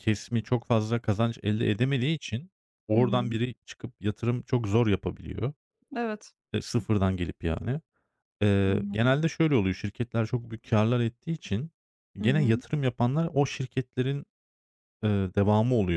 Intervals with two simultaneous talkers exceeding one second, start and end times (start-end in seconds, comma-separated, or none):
none